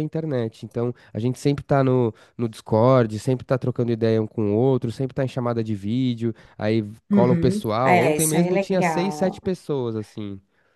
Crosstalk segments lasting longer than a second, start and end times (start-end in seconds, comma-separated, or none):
7.1-9.4